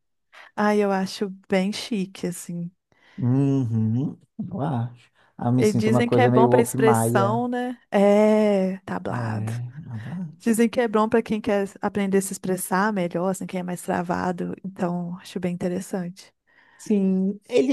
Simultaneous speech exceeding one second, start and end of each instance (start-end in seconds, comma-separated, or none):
5.6-7.4